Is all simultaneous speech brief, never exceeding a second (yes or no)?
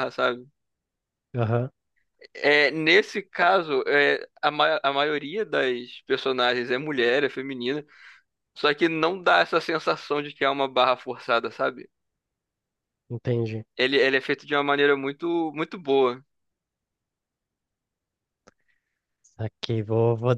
yes